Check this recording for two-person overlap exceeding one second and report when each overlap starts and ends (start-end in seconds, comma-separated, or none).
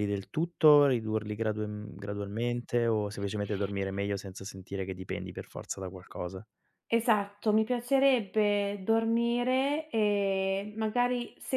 none